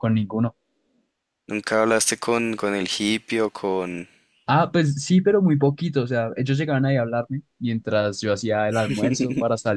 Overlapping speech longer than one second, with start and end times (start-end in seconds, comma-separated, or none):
none